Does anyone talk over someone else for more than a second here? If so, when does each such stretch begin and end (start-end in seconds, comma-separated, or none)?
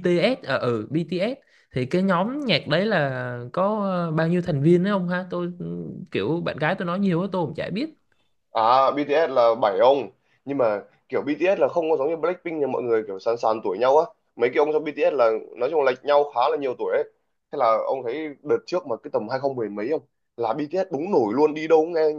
none